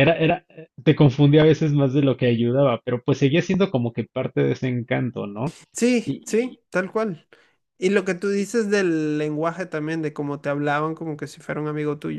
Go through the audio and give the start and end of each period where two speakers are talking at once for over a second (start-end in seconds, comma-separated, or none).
none